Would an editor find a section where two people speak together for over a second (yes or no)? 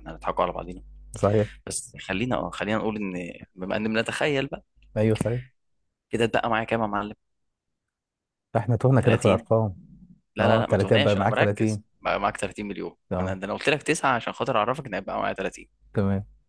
yes